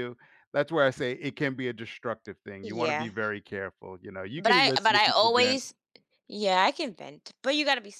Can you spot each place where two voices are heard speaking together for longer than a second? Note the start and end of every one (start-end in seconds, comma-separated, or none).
4.3-5.6